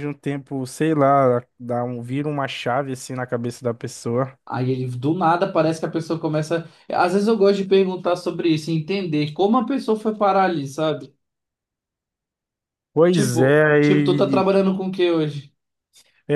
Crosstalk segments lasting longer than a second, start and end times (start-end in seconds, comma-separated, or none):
13.1-14.4